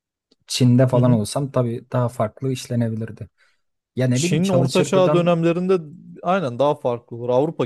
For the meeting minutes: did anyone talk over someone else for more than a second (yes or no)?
yes